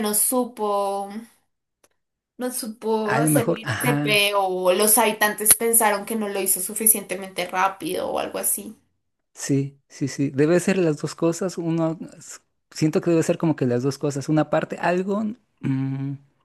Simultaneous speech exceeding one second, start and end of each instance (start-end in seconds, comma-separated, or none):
3.0-4.3